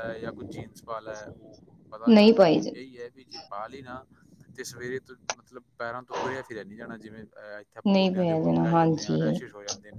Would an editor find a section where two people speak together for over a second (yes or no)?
yes